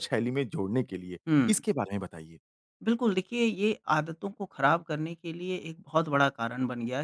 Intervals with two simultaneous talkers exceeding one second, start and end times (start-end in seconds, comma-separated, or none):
none